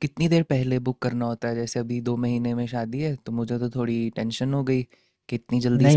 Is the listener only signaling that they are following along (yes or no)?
no